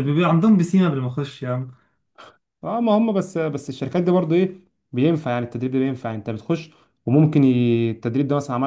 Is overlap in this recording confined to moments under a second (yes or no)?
yes